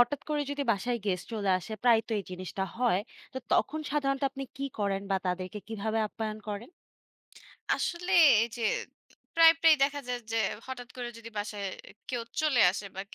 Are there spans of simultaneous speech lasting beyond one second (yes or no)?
no